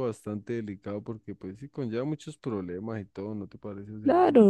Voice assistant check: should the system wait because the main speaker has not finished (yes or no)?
no